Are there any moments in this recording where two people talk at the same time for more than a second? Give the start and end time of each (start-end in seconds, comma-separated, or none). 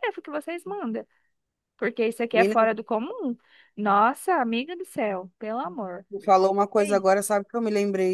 none